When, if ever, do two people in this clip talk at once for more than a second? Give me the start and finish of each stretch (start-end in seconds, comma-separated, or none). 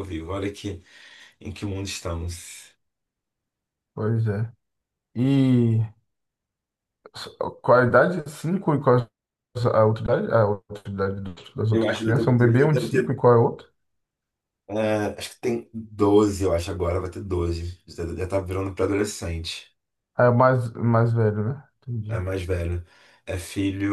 11.7-13.2